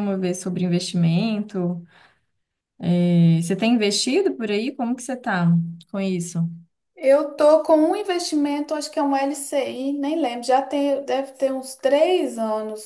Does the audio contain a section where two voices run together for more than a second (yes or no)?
no